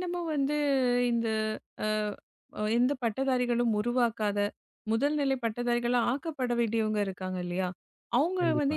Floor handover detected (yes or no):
no